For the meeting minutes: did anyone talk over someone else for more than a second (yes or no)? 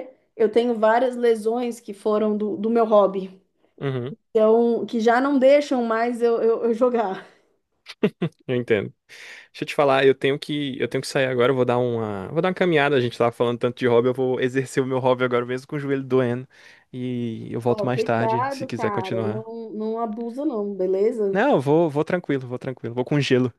yes